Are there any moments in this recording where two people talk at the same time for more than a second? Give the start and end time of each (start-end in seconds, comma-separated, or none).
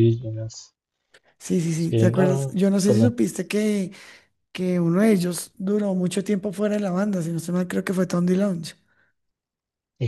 1.8-3.1